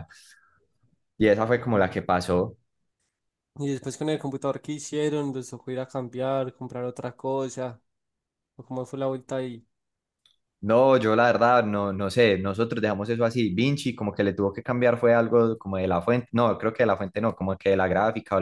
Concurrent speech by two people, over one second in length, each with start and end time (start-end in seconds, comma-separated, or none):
none